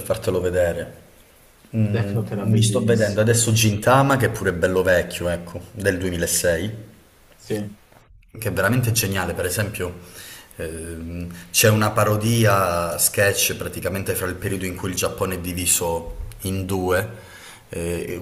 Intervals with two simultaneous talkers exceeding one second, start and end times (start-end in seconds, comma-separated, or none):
1.9-3.4